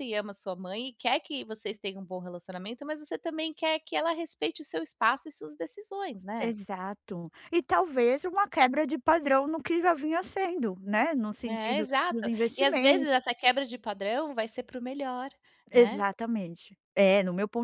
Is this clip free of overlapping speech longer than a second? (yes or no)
no